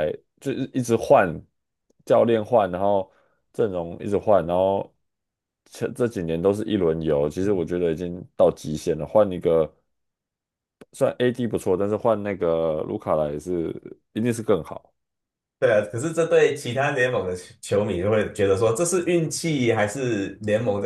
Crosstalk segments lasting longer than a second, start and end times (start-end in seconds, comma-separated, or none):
none